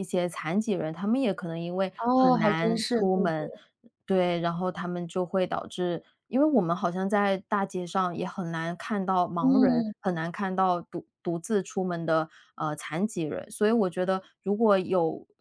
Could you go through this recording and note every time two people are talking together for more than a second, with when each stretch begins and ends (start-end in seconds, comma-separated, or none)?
2.0-3.5